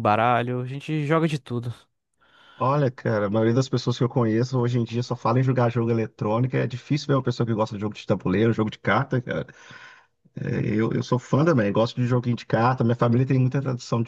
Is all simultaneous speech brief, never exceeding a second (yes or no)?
yes